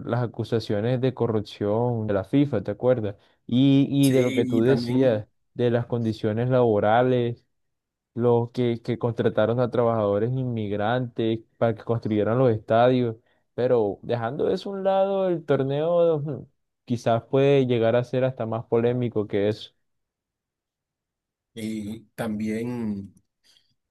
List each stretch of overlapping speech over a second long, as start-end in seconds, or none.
4.0-5.2